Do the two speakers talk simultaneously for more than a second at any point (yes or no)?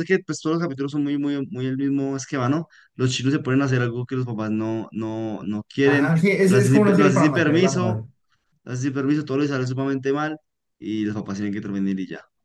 yes